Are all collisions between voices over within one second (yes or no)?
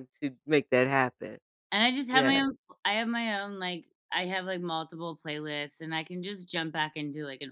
yes